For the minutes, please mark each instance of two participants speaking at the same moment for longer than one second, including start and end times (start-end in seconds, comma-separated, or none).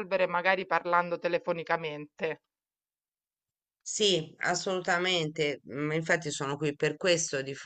none